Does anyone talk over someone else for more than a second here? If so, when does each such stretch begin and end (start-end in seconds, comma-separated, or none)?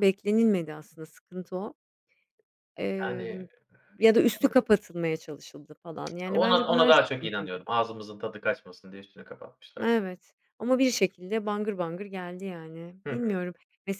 6.3-7.6